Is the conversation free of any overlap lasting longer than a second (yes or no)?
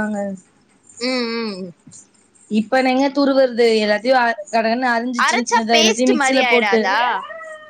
no